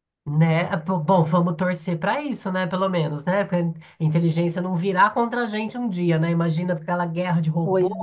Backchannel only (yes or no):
yes